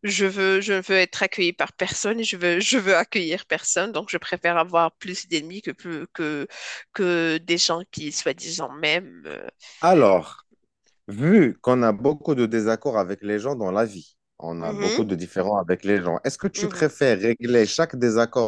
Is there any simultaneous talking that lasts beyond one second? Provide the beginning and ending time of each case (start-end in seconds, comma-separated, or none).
none